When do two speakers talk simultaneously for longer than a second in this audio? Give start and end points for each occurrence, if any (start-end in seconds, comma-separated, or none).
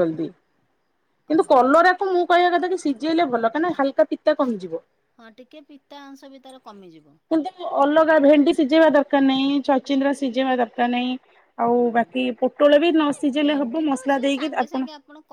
11.8-14.5